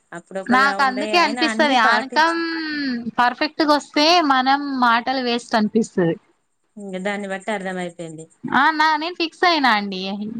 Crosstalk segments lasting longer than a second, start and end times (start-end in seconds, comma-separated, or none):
0.5-2.4